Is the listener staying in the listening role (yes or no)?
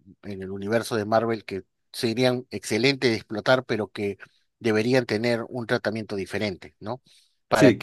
yes